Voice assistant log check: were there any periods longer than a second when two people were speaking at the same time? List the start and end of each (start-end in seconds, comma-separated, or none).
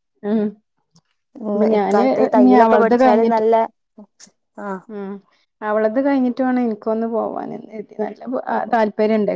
1.5-3.4